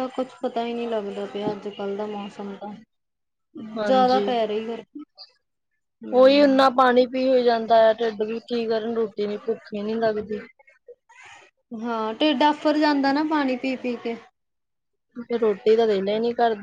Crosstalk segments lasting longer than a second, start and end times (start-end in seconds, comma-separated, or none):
none